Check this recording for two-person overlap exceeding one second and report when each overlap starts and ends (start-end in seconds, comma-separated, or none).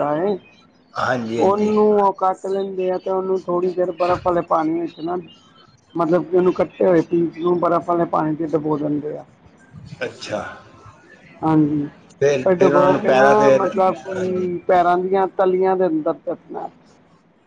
12.4-14.5